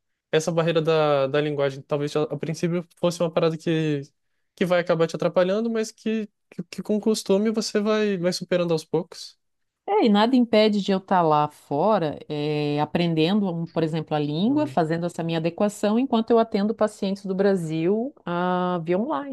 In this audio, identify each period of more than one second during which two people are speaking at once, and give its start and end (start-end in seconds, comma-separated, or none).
none